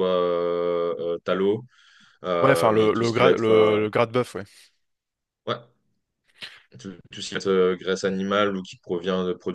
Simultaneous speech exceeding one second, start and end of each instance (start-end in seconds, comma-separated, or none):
2.4-3.8